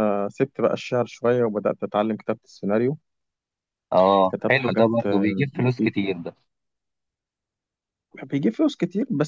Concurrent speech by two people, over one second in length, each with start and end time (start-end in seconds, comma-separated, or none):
4.3-6.0